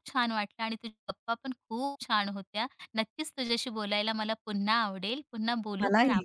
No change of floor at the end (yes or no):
yes